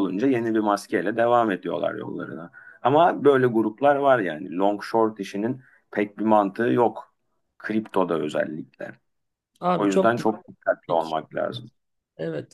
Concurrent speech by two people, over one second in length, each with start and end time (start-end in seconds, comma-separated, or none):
9.8-11.1